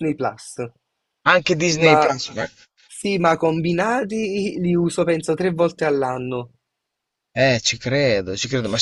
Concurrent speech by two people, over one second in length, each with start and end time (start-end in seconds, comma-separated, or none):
none